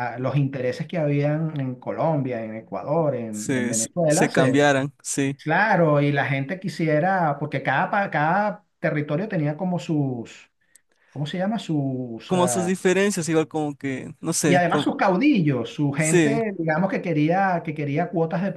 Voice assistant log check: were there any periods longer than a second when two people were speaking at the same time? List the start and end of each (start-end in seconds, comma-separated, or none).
3.3-4.7